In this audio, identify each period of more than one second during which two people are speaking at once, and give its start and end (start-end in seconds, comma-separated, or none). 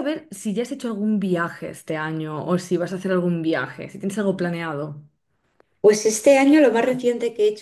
none